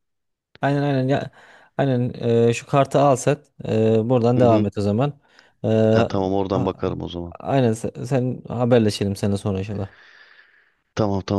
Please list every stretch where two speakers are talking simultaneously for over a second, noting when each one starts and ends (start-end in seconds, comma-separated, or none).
none